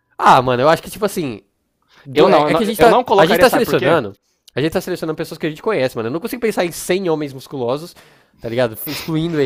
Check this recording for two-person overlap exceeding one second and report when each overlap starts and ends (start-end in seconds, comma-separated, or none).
2.1-4.0